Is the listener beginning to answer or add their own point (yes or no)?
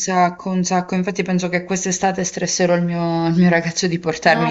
yes